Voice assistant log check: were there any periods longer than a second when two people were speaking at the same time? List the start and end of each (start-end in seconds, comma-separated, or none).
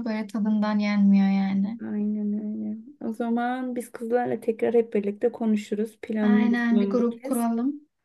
6.2-7.5